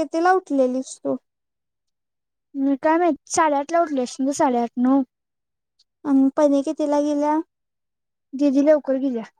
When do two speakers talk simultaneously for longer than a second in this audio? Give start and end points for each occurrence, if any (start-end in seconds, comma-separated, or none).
none